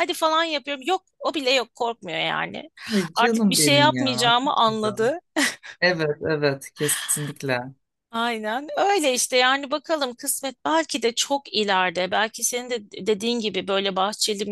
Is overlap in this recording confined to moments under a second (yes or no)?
no